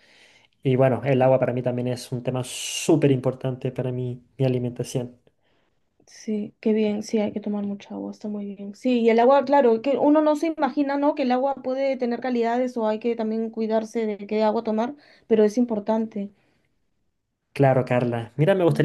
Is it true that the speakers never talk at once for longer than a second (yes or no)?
yes